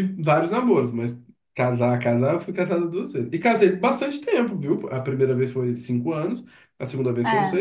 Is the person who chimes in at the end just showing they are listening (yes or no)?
yes